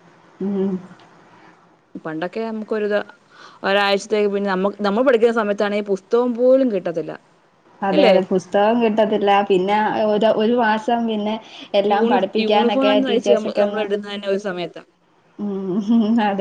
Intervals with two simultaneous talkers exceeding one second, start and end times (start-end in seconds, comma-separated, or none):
11.9-13.8